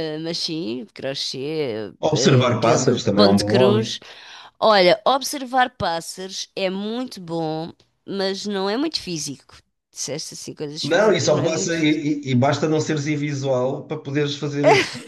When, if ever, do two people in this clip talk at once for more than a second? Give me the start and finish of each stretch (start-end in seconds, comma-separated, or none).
2.0-4.0, 10.8-12.0